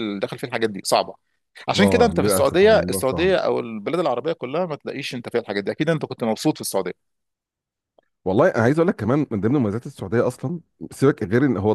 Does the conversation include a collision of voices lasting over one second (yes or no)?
yes